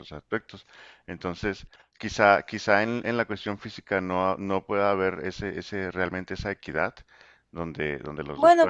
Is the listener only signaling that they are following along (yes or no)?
no